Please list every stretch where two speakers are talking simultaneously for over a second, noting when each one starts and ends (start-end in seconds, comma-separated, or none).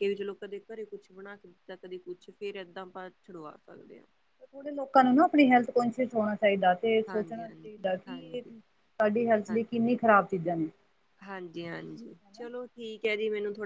7.1-8.4